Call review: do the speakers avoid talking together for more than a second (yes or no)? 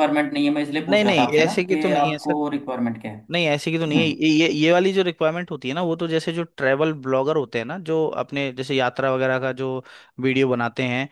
no